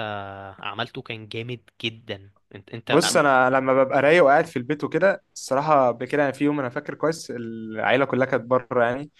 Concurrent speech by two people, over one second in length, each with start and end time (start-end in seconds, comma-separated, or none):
none